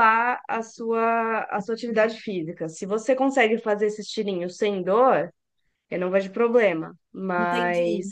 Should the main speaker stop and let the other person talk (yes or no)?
no